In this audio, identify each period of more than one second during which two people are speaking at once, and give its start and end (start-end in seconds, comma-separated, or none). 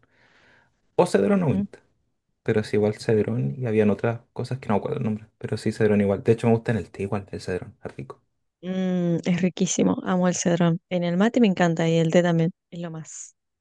none